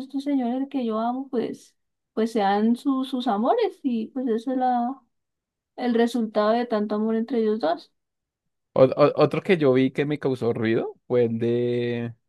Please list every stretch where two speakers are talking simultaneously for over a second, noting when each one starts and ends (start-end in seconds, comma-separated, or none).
none